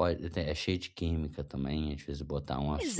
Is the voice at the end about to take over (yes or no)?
yes